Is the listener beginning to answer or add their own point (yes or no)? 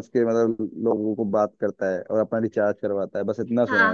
yes